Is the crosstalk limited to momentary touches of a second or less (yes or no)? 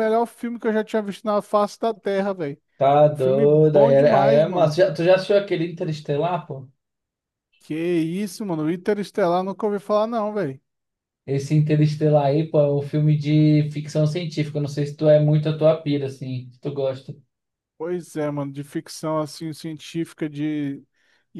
no